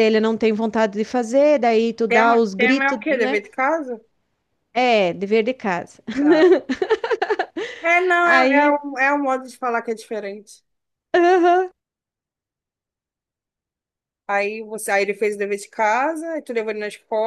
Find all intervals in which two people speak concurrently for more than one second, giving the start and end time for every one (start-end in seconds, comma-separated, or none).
2.1-3.4